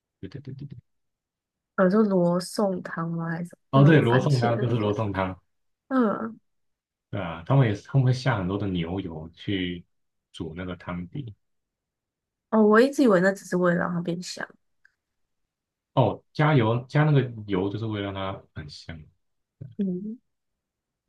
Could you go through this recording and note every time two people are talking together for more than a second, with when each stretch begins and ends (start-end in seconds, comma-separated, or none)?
3.7-5.0